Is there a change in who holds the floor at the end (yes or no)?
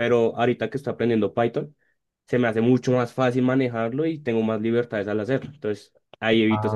yes